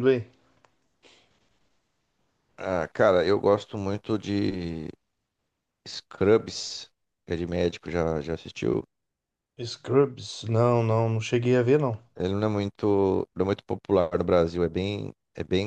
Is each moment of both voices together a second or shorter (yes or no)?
yes